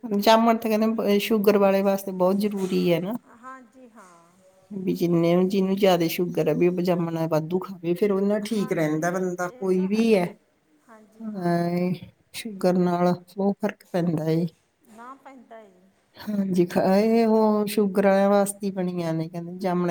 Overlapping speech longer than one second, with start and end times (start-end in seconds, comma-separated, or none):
8.6-10.3